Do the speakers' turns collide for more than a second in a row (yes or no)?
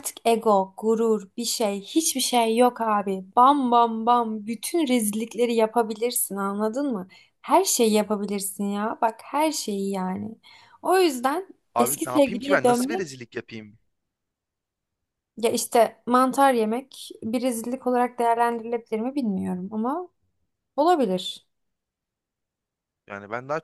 yes